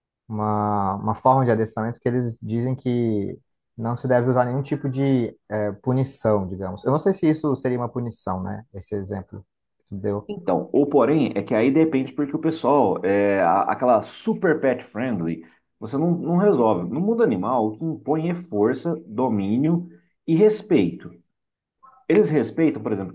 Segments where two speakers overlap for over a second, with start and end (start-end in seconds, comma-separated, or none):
none